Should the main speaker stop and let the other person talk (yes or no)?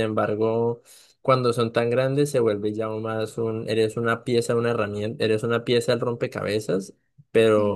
no